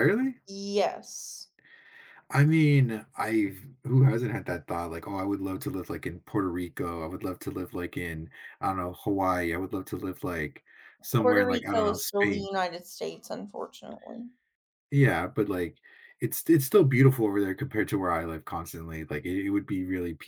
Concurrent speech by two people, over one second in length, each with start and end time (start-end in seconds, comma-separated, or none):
11.1-12.5